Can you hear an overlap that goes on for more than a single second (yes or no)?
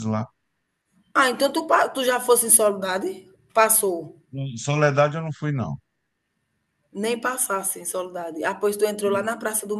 no